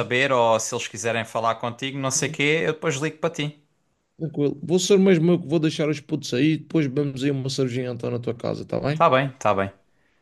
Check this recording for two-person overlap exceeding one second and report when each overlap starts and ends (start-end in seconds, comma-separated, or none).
none